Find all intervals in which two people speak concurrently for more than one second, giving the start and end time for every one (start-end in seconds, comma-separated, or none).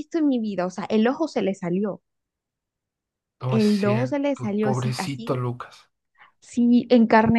3.5-5.4